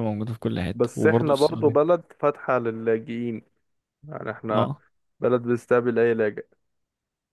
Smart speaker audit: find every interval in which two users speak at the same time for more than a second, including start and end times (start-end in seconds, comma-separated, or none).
0.7-1.9